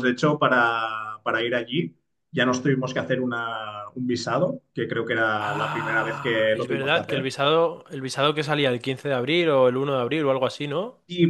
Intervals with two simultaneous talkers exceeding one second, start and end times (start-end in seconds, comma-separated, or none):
5.4-7.3